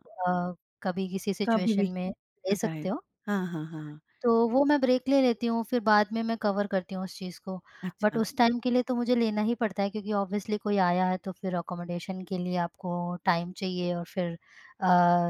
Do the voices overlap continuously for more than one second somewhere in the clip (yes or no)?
no